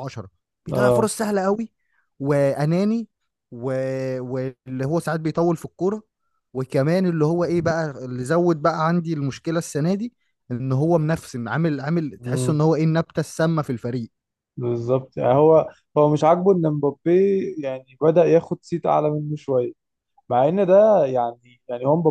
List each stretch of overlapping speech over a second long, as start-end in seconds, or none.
none